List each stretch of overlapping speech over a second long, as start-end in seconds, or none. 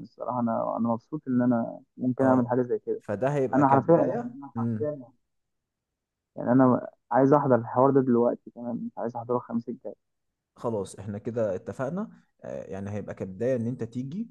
3.5-5.0